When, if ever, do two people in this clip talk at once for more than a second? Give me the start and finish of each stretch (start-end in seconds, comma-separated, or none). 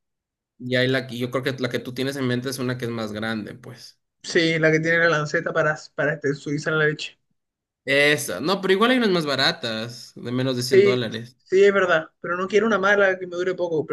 none